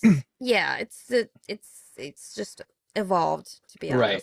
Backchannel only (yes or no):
no